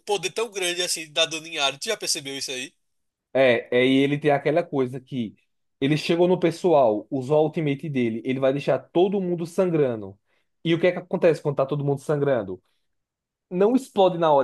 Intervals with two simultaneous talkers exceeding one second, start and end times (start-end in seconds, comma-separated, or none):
none